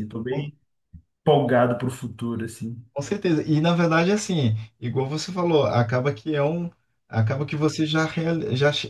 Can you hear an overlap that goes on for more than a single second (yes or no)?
no